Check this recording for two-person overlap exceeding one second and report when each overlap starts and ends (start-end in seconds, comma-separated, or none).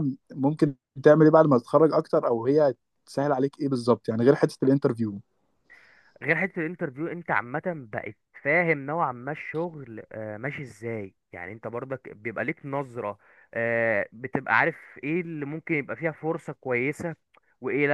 none